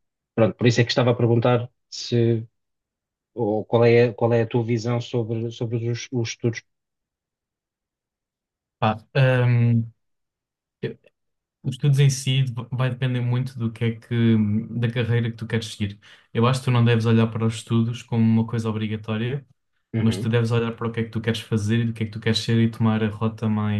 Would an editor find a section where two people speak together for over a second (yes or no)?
no